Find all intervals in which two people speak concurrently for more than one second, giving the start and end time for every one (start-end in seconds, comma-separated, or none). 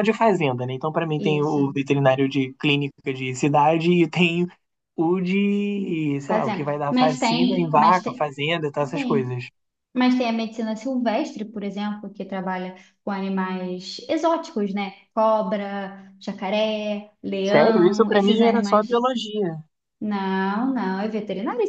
6.3-8.2, 17.4-19.0